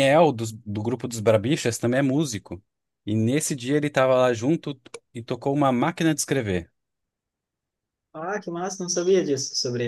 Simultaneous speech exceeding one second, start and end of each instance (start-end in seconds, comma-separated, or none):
none